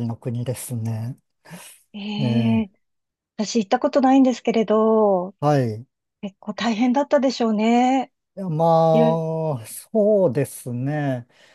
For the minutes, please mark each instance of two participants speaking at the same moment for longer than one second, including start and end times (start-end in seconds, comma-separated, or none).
none